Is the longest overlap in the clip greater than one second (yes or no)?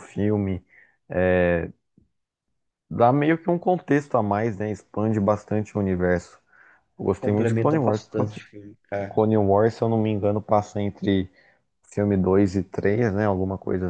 yes